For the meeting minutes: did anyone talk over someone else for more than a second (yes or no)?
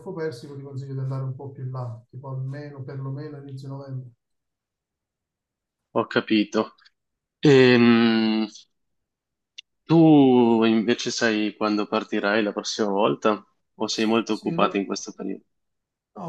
no